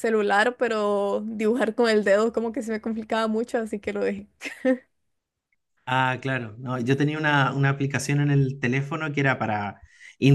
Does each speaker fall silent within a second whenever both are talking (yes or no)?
yes